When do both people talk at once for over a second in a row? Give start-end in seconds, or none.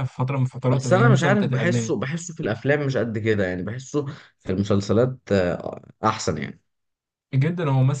0.7-1.9